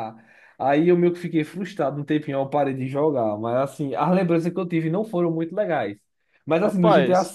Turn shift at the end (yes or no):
no